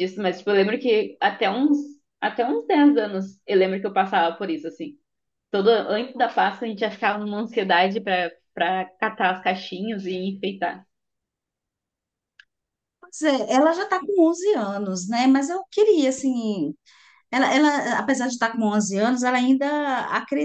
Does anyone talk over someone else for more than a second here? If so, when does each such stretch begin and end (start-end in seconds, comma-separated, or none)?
none